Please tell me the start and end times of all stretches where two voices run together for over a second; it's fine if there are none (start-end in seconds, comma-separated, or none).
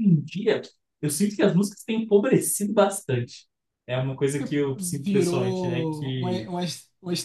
4.8-6.5